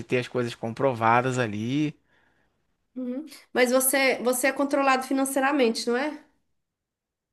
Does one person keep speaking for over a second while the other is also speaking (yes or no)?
no